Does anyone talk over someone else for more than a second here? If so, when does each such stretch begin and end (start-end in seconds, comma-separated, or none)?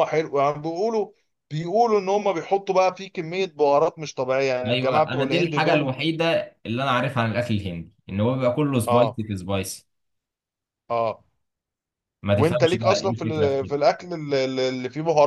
4.7-5.9, 12.3-13.8